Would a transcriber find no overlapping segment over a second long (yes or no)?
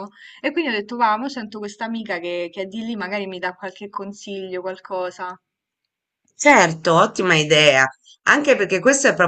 yes